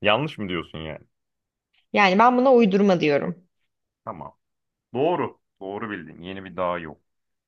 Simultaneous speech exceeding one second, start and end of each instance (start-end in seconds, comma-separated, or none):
none